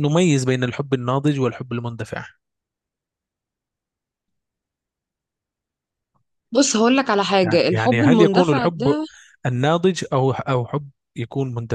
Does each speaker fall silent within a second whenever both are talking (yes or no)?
no